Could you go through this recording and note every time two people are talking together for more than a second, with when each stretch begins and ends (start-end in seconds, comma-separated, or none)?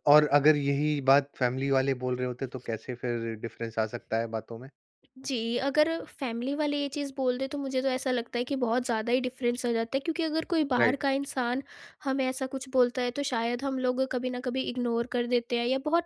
none